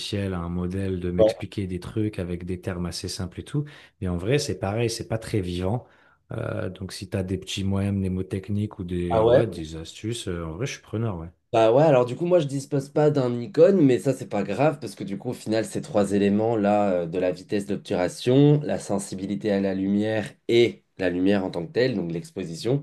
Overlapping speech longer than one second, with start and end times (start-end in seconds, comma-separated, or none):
none